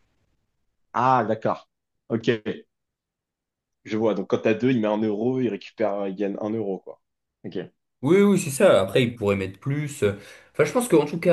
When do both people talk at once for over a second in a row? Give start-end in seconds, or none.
none